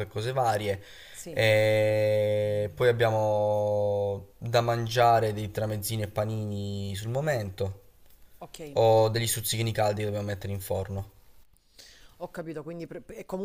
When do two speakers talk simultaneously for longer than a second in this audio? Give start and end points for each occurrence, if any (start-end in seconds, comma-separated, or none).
none